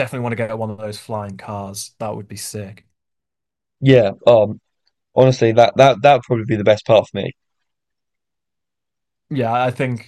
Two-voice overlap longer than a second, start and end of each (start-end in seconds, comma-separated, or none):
none